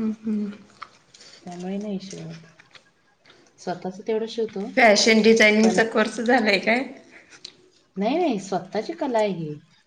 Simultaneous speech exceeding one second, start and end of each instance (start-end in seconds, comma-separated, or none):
none